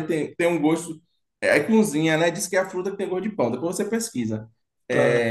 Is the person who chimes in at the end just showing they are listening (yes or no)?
yes